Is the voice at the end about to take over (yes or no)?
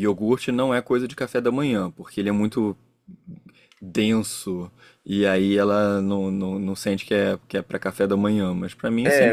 yes